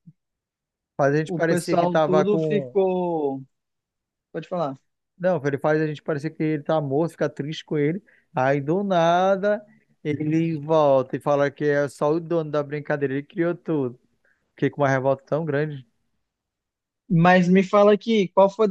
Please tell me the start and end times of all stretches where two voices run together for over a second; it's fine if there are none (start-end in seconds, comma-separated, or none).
1.2-2.8